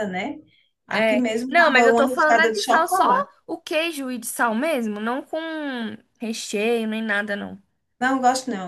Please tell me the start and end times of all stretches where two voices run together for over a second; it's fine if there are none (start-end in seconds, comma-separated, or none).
0.9-3.0